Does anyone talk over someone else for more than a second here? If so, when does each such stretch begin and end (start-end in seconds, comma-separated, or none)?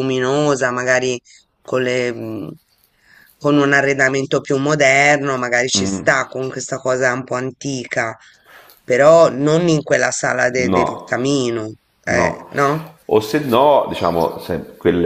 none